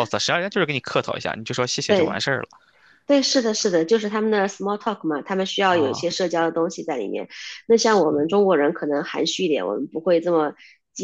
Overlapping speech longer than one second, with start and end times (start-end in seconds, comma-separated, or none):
none